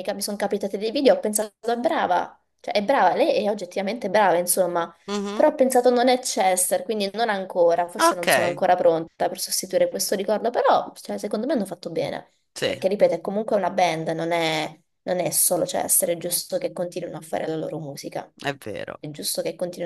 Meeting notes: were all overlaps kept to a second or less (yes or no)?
yes